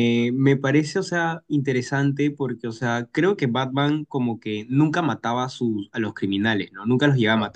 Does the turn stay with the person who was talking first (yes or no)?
yes